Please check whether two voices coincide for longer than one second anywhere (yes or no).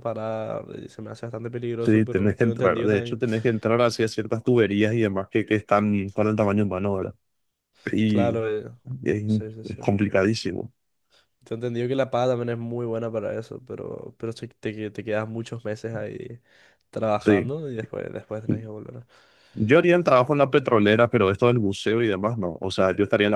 yes